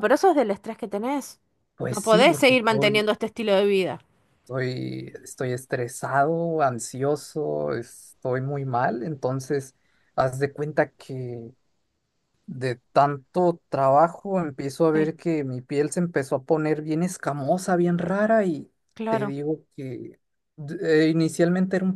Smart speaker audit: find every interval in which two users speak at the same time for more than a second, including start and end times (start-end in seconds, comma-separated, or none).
1.9-3.1